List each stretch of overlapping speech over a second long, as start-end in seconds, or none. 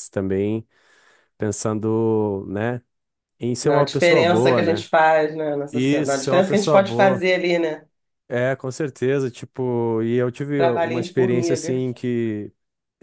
3.6-4.9, 5.7-7.2, 10.5-11.8